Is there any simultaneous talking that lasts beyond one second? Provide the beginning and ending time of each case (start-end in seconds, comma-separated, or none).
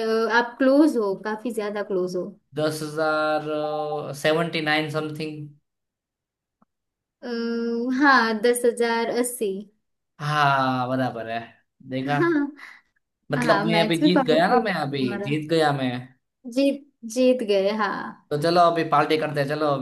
13.5-15.3